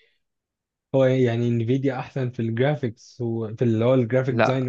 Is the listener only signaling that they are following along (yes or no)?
no